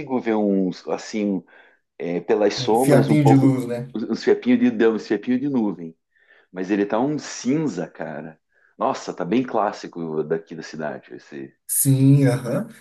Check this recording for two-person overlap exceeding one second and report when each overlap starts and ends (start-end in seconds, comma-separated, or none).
2.6-3.9